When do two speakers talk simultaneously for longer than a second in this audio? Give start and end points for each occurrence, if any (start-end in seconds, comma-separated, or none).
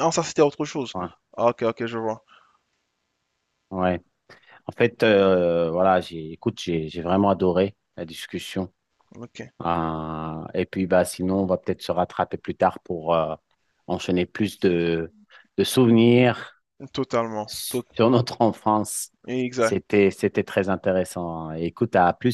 none